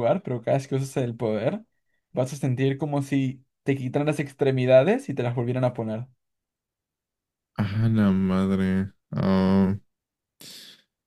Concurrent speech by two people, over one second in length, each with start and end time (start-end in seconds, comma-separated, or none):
none